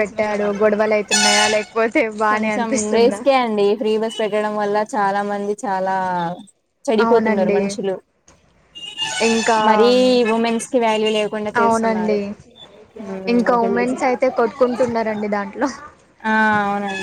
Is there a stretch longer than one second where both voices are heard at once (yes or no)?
no